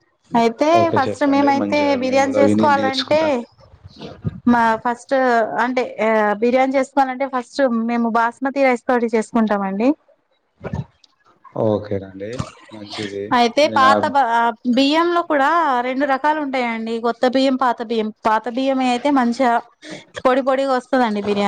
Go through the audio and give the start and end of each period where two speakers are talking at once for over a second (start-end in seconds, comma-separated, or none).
0.8-3.2